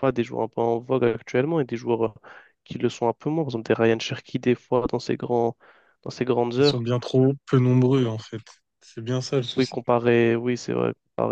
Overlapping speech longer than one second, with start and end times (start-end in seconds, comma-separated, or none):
none